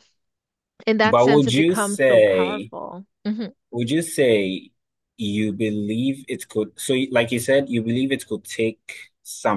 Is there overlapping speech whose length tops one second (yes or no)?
yes